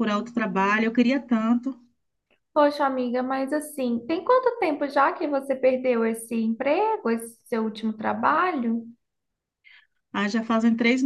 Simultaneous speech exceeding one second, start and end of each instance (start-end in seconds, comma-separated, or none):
none